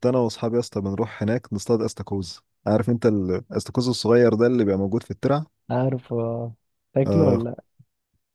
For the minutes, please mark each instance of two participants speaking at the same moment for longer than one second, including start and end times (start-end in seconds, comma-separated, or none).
none